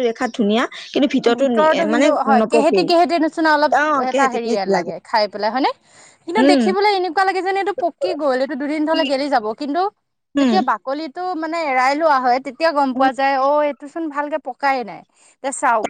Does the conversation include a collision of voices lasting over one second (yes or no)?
no